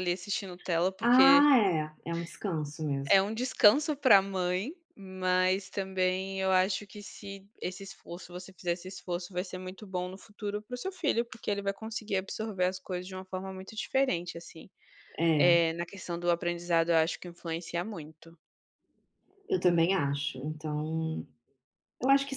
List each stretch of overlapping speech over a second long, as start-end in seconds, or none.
none